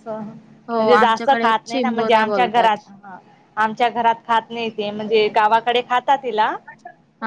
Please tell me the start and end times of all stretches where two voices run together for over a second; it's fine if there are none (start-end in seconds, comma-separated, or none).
0.8-2.7